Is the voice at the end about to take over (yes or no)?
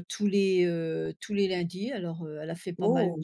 no